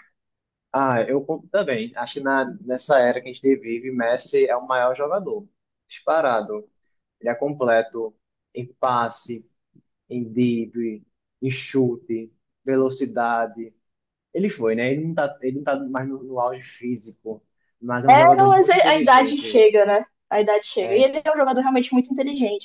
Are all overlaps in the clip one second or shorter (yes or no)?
no